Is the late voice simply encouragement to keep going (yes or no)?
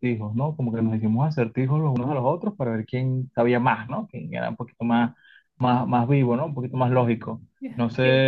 yes